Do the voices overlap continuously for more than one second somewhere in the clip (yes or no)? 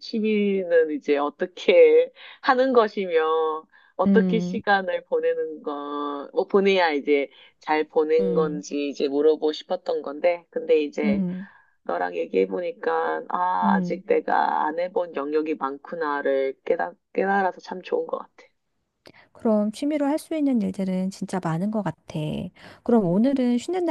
no